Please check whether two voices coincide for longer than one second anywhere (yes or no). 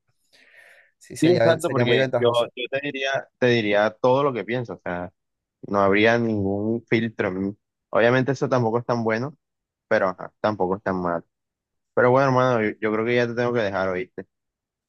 yes